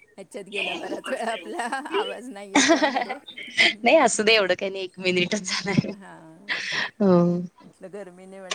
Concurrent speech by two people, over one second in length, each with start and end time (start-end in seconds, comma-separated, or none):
none